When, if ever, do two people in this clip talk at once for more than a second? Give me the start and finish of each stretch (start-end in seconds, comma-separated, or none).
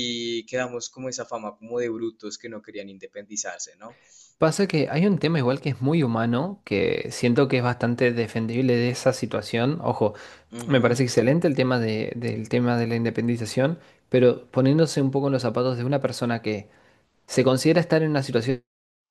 none